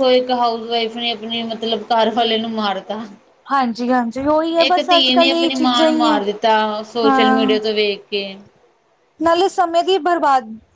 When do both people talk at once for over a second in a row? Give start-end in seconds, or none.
4.7-6.2